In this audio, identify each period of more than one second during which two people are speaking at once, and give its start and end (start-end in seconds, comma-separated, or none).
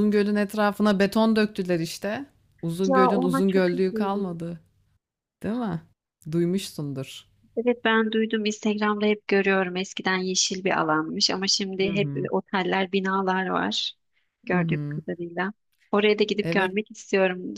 2.9-4.4